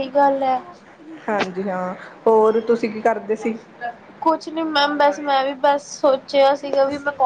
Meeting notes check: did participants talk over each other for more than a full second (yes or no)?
no